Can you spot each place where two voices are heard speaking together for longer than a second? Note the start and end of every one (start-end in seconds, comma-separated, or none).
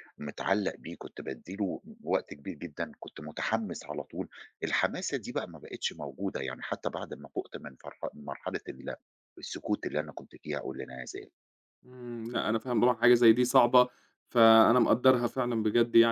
none